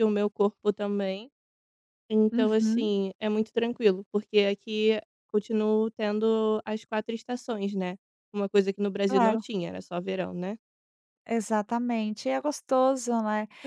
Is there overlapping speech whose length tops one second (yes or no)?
no